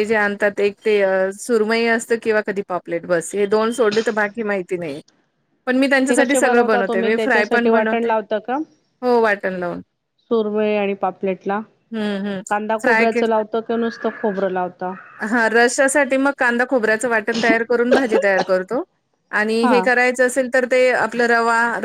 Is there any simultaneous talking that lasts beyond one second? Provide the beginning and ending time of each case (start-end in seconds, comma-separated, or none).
6.1-8.0